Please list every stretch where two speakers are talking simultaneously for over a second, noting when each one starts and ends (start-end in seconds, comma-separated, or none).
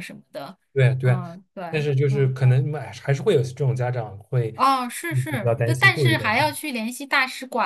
5.1-6.6